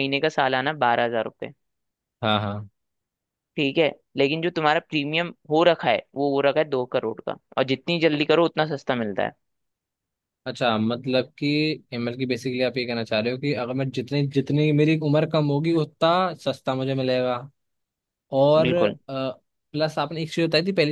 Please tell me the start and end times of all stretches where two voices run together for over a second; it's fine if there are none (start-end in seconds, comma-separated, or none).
none